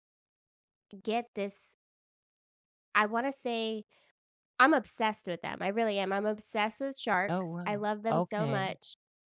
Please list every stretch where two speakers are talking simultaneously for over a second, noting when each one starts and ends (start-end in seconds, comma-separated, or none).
7.3-8.8